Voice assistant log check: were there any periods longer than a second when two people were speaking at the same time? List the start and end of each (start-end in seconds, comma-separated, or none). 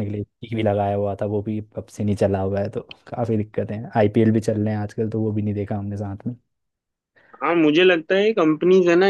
none